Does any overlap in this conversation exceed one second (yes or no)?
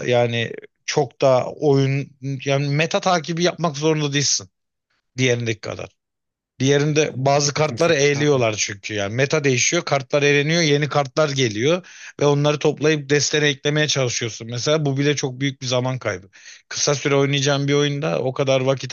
yes